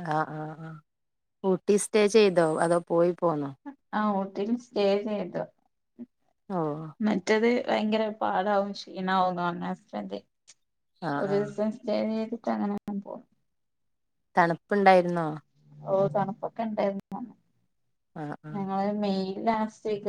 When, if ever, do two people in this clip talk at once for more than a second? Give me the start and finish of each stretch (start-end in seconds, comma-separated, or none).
none